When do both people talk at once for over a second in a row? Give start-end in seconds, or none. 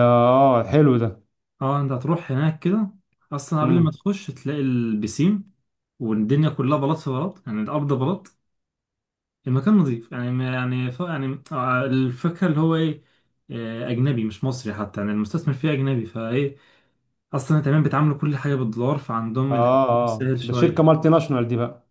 19.5-20.9